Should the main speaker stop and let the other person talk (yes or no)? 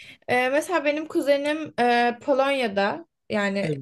no